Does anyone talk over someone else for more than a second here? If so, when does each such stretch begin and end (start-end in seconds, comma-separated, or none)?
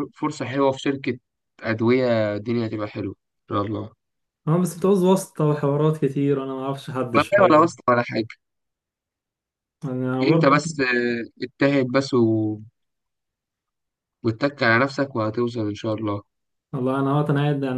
none